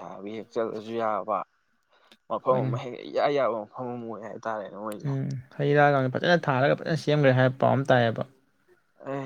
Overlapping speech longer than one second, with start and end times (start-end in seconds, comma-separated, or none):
none